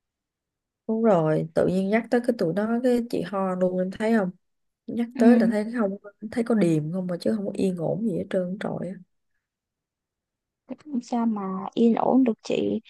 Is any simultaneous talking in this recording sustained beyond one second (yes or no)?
no